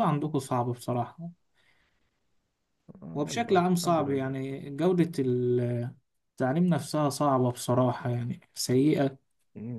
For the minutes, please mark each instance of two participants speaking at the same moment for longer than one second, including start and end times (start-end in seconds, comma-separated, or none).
3.1-4.3